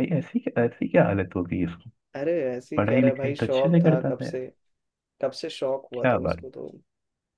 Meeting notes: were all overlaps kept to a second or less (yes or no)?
no